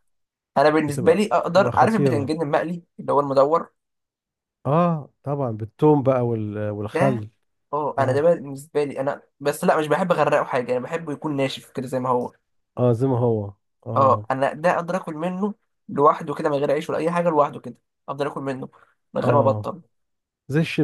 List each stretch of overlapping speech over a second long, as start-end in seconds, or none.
0.8-2.4